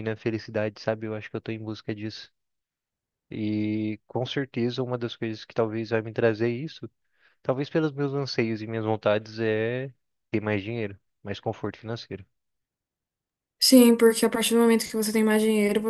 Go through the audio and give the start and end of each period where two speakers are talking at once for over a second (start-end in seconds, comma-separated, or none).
none